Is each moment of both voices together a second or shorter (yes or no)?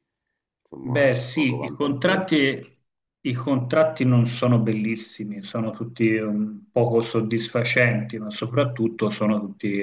no